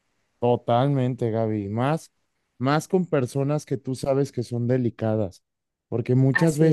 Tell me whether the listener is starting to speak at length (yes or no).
no